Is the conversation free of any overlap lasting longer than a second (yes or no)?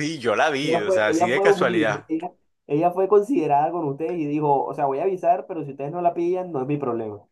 no